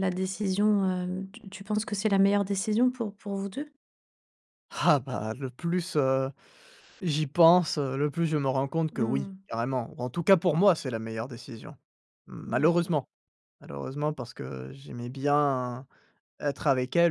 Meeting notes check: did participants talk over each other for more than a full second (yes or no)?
no